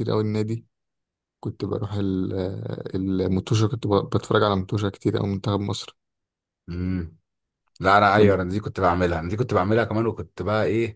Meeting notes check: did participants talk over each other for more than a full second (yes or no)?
no